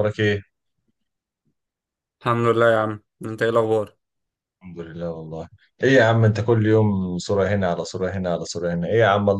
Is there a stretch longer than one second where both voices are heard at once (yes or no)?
no